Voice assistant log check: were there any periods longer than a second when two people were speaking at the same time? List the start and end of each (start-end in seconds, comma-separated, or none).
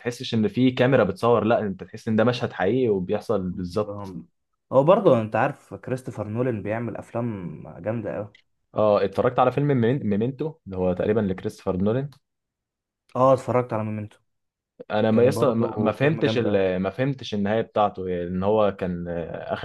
15.1-16.6